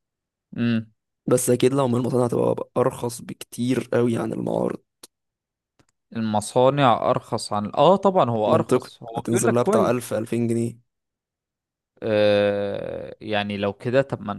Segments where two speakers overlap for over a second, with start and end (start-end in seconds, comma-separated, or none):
8.5-9.9